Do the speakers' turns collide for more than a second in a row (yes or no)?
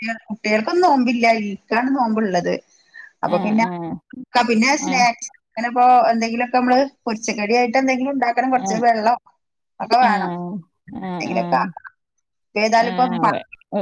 no